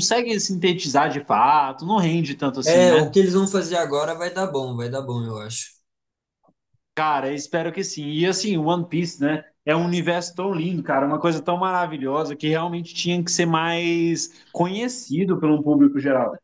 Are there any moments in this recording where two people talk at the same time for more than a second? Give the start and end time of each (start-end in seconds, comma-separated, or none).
none